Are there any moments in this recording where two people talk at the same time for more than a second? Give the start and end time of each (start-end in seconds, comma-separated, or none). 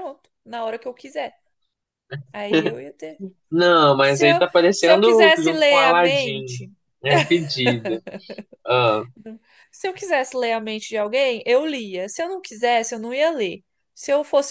4.0-6.6